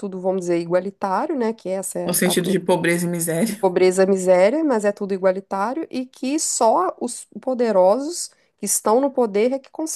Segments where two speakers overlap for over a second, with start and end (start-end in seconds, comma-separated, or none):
none